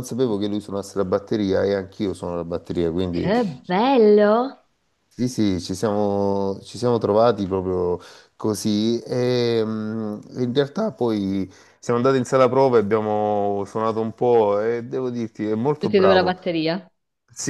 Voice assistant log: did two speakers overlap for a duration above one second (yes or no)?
no